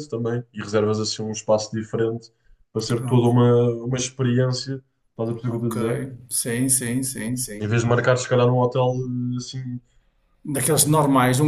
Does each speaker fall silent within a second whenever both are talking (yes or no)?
yes